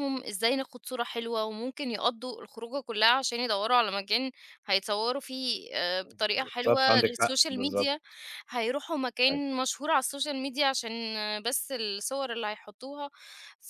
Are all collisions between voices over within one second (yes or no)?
no